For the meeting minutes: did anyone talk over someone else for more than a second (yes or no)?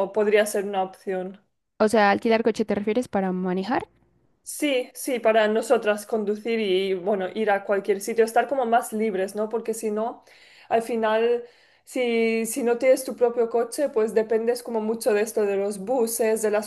no